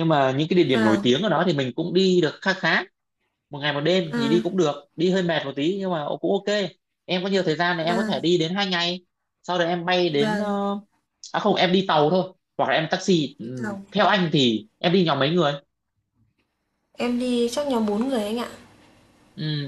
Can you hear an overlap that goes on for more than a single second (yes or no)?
no